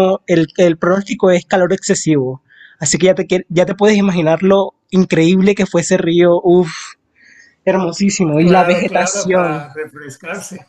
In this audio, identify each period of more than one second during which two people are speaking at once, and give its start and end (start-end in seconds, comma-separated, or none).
8.4-9.7